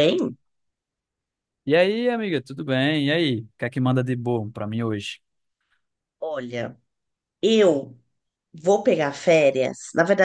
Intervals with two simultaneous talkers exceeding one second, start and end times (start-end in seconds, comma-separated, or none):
none